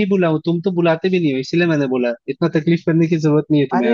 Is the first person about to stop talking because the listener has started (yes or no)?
yes